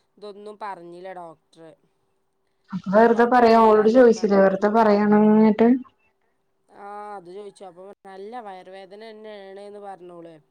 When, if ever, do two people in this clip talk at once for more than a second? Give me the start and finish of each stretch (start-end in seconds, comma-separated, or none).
none